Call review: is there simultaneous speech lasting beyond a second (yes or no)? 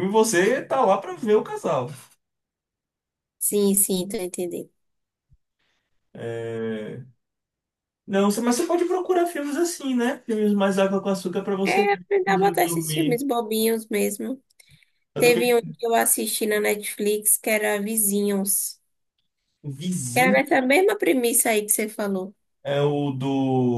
yes